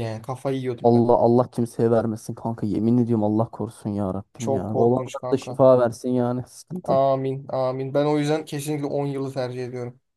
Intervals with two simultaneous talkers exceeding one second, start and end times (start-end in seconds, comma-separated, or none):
4.4-5.6